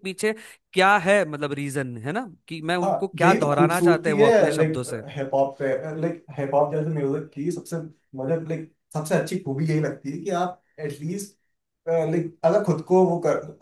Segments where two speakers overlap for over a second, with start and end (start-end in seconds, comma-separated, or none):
2.8-5.0